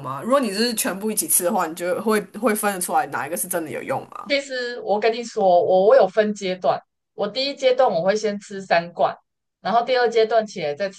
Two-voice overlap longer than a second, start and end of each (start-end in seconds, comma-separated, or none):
none